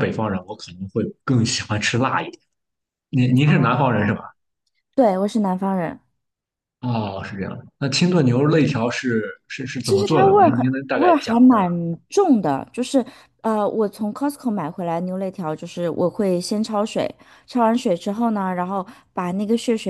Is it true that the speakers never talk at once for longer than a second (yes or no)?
no